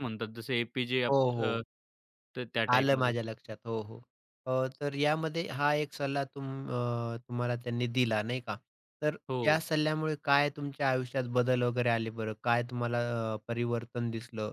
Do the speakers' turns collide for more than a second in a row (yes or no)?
no